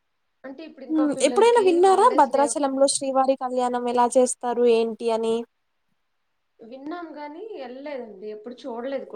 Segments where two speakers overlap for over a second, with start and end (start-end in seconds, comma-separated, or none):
0.9-3.1